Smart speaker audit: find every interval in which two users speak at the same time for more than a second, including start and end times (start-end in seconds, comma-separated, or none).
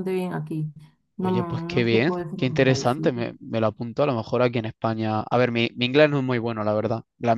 1.2-3.1